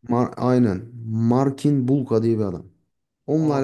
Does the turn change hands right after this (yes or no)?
no